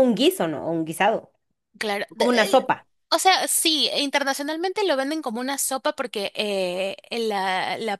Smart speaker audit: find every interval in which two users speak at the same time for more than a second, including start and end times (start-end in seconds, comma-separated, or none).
none